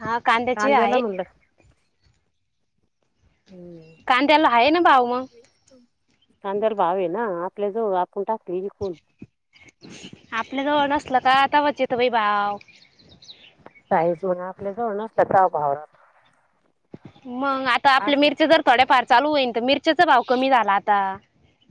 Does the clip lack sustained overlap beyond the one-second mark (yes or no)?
yes